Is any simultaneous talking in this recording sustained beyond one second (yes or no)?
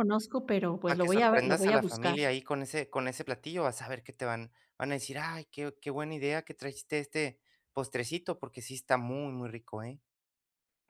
yes